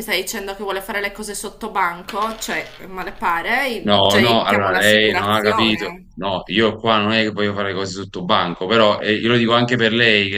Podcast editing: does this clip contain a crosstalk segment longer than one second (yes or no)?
yes